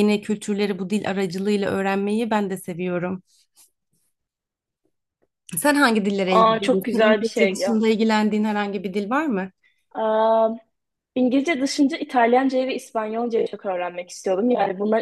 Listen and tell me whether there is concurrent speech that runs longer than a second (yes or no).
yes